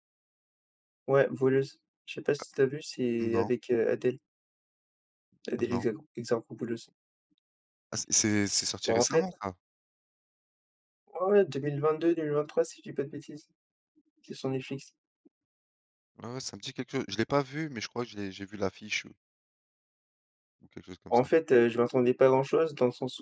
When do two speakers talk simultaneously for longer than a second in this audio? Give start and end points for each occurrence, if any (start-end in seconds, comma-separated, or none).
none